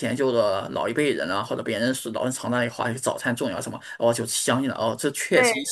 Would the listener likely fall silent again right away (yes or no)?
yes